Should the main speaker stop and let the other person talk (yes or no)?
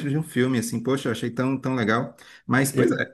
no